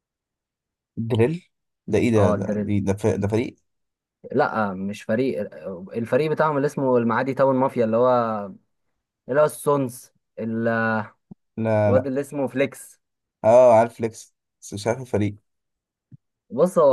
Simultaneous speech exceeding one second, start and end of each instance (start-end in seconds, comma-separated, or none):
none